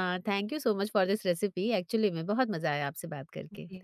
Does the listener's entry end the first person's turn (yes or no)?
yes